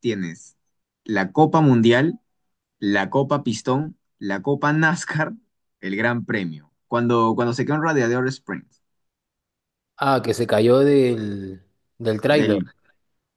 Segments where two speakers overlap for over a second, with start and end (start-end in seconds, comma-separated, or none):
none